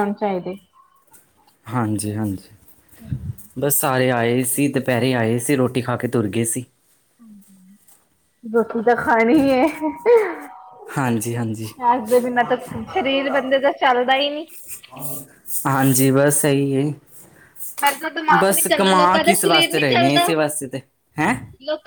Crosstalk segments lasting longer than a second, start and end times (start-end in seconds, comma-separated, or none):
18.4-20.3